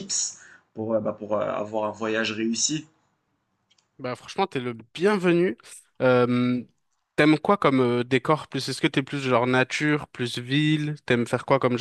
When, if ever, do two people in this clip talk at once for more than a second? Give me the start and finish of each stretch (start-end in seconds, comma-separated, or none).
none